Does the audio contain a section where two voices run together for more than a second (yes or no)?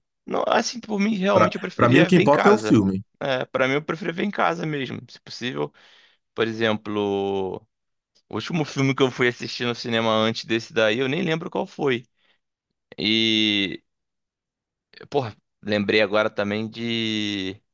yes